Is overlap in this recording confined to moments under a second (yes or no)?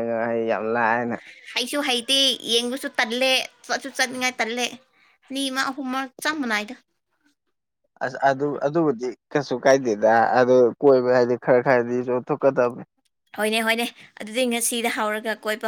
yes